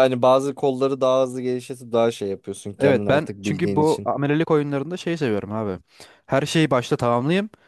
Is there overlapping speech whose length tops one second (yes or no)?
yes